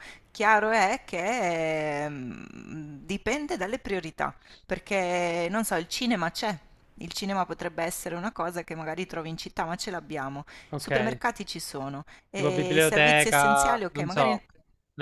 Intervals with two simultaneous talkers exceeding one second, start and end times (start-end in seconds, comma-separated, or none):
12.3-14.4